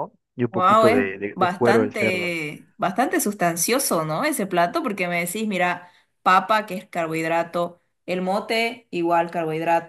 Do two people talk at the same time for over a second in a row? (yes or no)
yes